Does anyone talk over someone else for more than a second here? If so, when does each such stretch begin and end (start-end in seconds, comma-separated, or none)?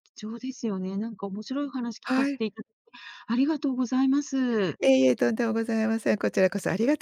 none